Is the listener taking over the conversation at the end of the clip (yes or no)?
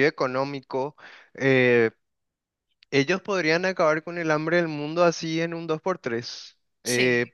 no